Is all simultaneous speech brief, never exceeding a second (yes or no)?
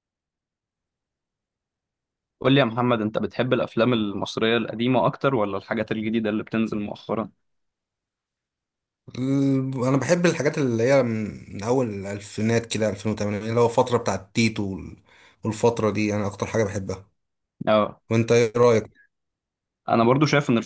yes